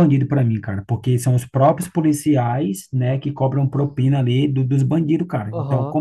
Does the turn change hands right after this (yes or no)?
yes